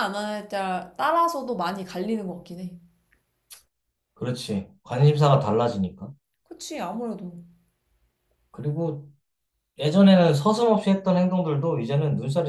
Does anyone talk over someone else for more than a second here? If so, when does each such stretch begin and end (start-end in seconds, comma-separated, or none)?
none